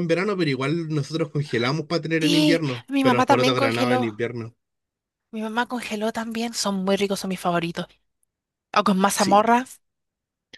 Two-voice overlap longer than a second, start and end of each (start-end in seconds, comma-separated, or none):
2.2-4.1